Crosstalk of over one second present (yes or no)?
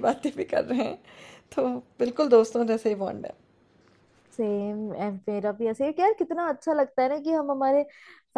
no